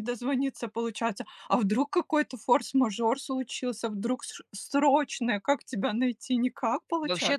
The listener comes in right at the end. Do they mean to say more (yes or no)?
yes